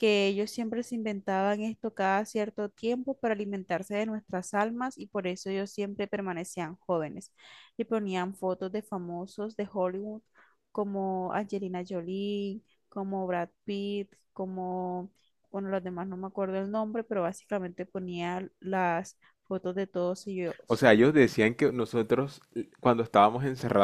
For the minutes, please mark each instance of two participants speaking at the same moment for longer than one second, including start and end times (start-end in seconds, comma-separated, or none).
none